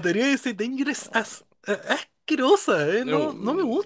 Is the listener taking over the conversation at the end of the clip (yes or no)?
yes